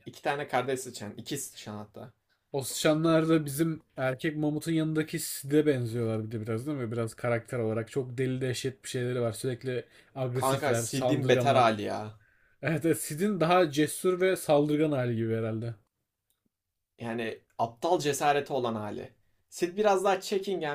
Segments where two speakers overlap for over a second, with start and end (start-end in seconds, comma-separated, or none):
10.4-11.7